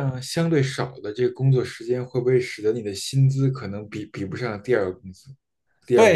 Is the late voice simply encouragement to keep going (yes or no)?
no